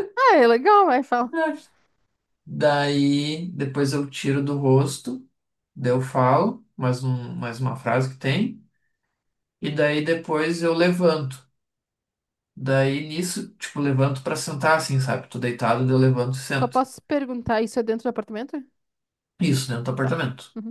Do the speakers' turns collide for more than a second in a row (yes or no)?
no